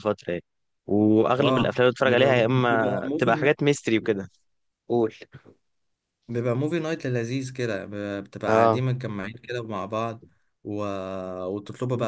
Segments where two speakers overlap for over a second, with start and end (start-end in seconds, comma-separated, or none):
1.4-3.5